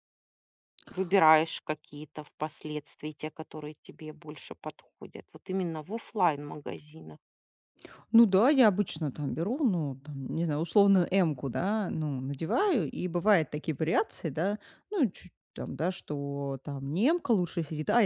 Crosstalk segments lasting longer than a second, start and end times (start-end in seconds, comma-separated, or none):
none